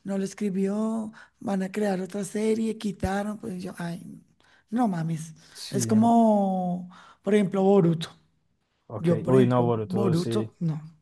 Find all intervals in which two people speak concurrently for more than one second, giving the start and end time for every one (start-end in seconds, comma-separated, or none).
9.0-10.5